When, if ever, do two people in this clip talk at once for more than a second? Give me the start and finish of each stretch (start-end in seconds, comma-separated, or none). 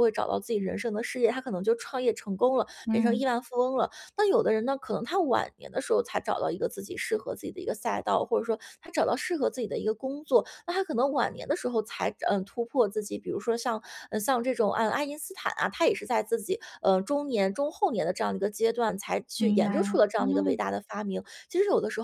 19.4-20.6